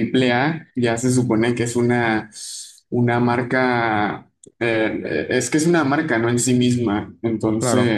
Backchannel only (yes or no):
yes